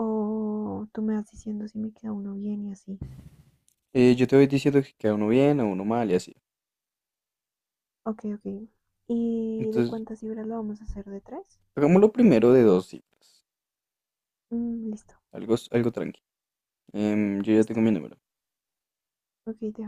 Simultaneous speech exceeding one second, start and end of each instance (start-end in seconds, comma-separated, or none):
none